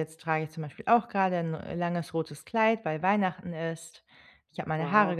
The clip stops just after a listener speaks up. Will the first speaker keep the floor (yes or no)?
yes